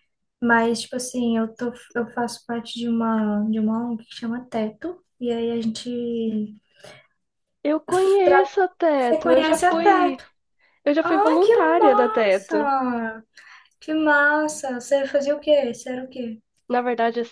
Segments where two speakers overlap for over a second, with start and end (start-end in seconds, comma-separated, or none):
9.0-10.2, 11.0-12.7